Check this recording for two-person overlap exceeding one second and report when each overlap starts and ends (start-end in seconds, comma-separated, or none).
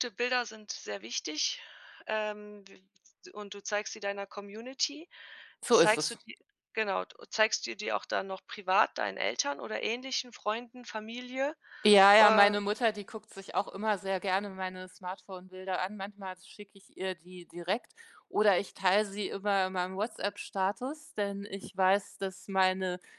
none